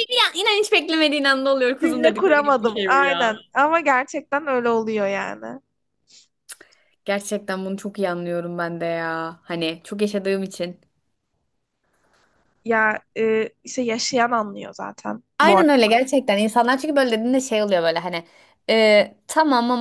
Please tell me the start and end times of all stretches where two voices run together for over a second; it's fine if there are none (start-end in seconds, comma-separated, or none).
1.8-3.3